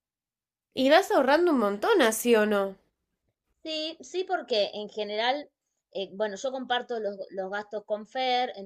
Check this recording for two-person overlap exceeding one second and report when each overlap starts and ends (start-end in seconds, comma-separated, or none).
none